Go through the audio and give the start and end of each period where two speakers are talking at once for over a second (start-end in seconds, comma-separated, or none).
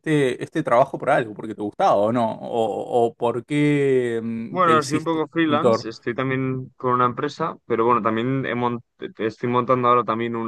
4.5-5.8